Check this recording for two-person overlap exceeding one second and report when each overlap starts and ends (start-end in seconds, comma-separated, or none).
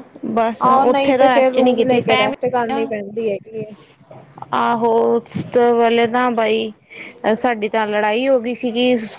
0.7-2.3